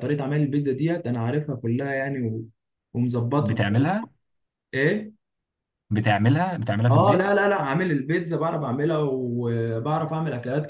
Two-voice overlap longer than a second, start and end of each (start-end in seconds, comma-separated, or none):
none